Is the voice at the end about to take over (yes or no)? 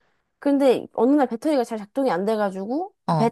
no